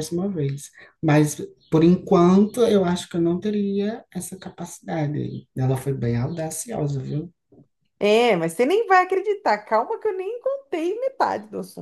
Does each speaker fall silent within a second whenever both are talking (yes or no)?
yes